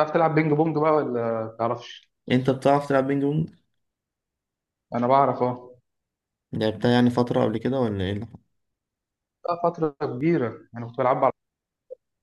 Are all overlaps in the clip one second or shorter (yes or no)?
yes